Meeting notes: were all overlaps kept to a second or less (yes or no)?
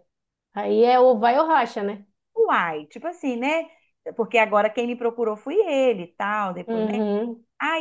yes